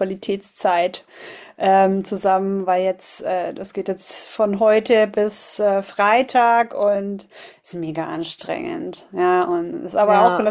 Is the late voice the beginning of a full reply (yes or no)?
no